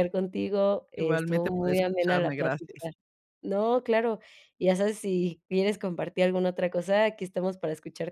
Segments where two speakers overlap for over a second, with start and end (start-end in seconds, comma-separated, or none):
1.0-2.9